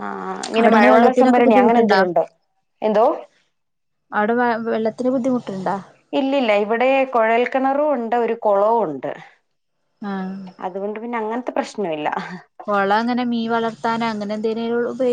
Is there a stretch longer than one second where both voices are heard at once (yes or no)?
yes